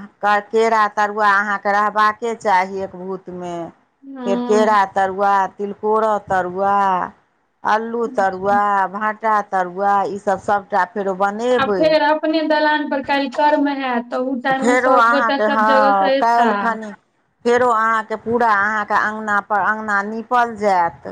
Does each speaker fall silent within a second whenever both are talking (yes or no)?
no